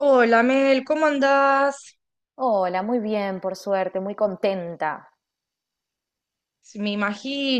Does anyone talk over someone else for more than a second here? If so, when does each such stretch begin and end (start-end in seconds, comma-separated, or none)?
none